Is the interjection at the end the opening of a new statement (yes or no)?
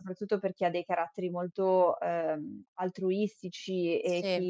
no